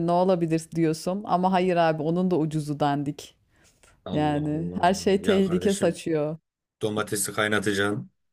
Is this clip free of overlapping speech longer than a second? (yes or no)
no